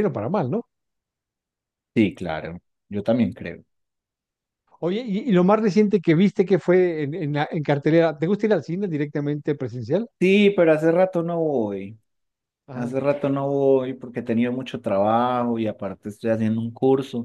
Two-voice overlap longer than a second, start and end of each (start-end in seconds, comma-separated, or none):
none